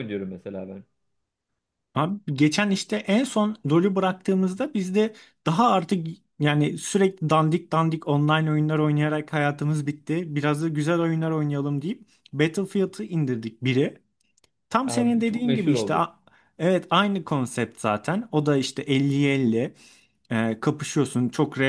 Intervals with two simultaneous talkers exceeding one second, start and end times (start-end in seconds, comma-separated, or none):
14.8-16.0